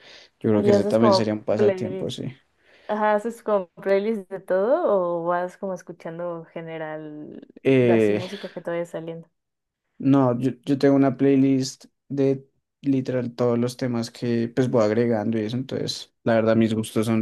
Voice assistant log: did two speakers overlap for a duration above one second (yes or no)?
yes